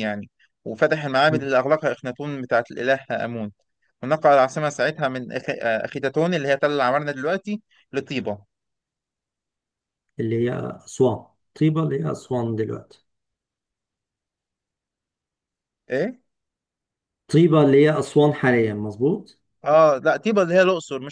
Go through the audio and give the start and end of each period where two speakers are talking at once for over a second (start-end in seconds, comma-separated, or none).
none